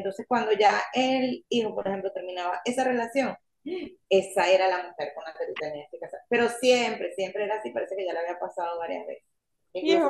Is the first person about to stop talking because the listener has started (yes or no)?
no